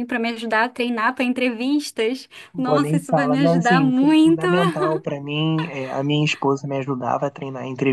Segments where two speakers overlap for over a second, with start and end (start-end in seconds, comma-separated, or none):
2.5-4.5